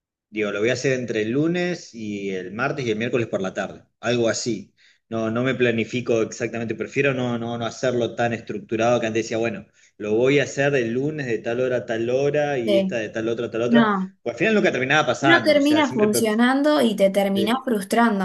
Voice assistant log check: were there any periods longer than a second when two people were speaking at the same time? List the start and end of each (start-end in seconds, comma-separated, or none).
15.2-16.4